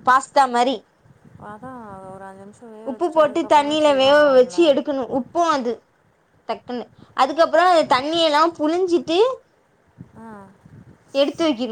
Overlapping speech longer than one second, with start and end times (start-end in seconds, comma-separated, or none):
2.9-4.6